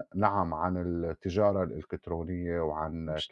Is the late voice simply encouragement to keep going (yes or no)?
yes